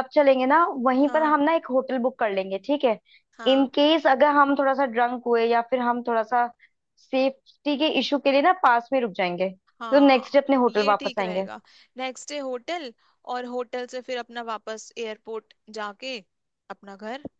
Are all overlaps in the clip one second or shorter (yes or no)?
no